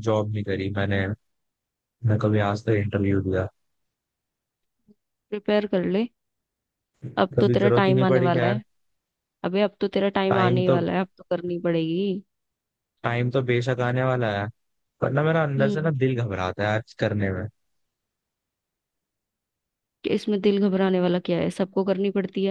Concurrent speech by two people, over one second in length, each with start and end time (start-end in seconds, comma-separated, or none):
7.4-8.6